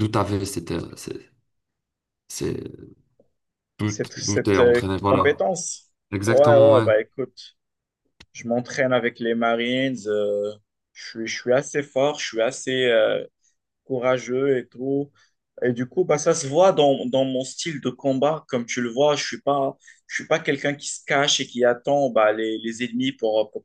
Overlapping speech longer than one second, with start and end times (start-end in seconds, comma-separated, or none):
3.9-5.5